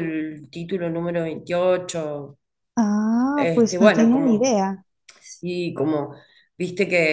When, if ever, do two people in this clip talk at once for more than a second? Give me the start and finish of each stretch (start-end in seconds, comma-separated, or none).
3.4-4.6